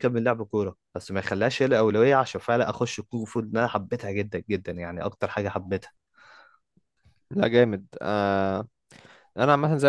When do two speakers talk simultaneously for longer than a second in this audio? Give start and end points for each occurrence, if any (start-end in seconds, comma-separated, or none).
none